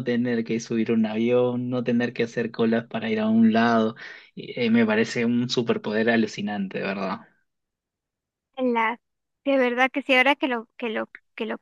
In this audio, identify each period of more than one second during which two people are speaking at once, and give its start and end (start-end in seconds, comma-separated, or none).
none